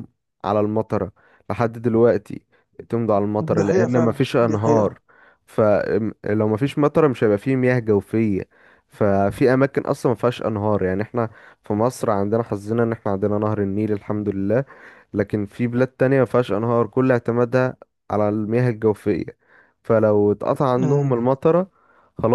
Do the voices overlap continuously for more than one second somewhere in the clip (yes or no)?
yes